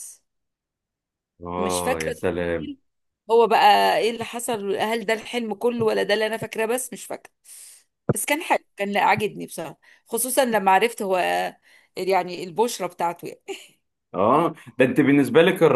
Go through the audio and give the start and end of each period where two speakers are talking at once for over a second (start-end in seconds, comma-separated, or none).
1.6-2.8